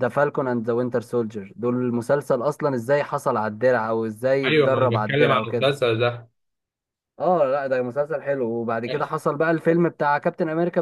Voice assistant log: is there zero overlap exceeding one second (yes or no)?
no